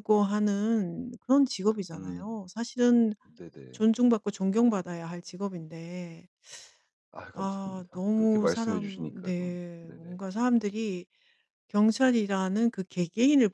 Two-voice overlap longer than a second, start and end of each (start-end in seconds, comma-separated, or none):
7.3-10.2